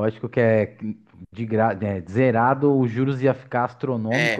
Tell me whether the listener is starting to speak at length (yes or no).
yes